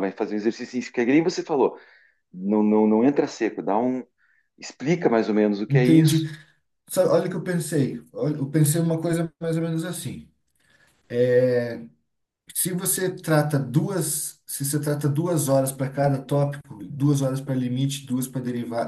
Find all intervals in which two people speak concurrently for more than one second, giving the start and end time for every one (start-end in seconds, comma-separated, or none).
none